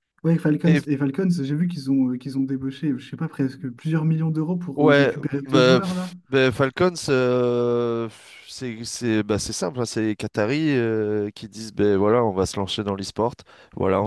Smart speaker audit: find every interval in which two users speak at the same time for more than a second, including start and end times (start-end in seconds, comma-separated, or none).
4.8-6.1